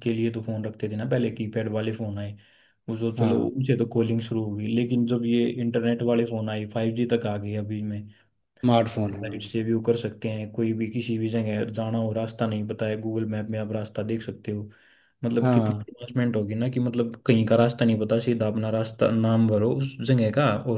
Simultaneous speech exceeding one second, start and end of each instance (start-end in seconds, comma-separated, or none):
none